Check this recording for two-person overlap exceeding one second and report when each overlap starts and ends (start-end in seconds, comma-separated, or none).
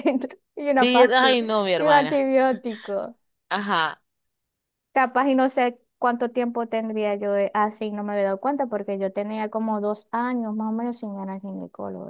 0.8-2.3